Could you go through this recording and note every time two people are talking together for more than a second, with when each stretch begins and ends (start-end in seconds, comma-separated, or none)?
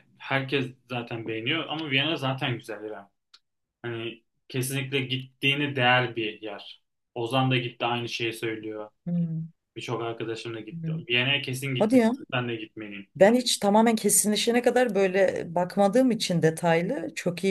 none